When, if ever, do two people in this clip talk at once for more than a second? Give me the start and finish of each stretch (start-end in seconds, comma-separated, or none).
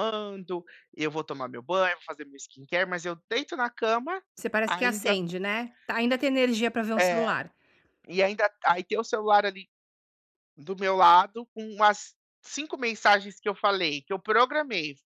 none